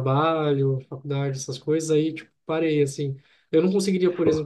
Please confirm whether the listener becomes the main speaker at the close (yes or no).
no